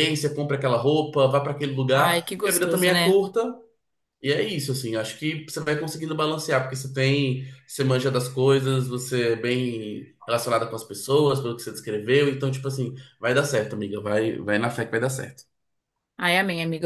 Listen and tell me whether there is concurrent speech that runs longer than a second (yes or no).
yes